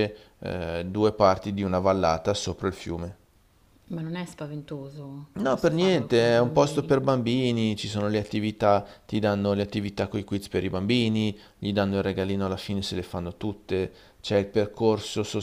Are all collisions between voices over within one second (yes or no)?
no